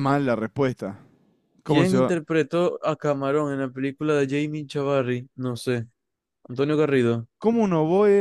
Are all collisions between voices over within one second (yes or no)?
yes